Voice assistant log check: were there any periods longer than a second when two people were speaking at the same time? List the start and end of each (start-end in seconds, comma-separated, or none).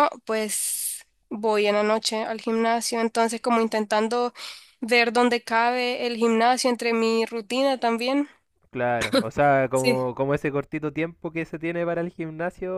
none